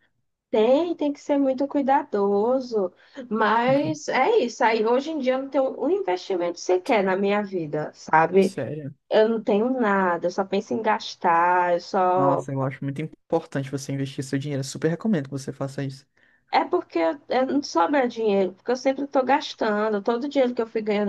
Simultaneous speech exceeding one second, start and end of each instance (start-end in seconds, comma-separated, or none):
none